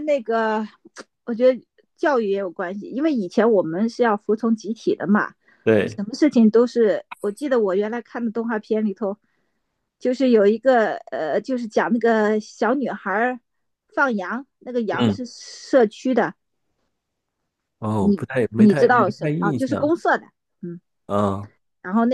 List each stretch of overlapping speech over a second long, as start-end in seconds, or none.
18.0-19.9